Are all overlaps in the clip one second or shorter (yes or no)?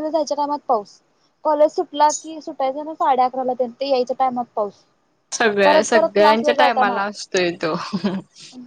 no